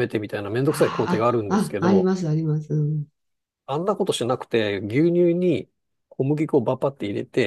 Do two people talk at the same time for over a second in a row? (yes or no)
yes